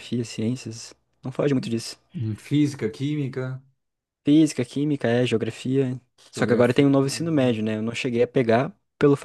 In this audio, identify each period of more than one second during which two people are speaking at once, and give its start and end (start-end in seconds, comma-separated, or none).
6.3-7.6